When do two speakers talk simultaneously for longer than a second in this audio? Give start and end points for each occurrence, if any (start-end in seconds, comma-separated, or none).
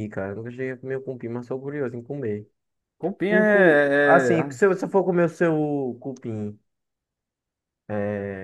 3.3-4.6